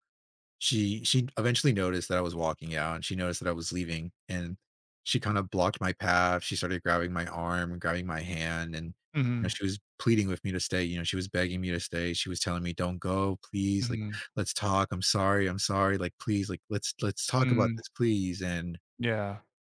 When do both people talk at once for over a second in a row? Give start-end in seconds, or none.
none